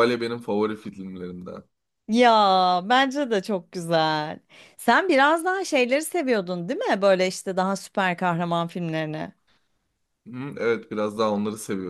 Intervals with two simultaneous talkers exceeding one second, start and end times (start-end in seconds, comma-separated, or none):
none